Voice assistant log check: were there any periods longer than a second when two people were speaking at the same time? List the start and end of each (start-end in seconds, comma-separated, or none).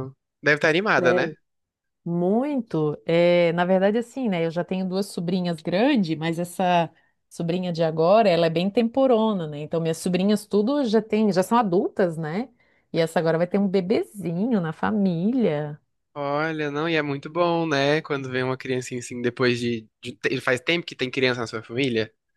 none